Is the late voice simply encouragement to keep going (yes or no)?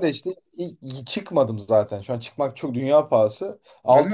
yes